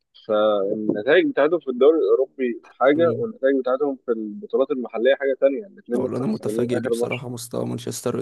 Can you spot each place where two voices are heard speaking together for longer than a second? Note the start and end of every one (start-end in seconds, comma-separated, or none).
5.9-7.2